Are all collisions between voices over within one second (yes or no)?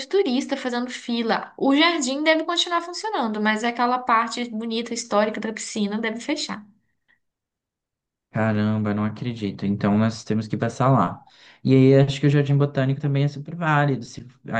yes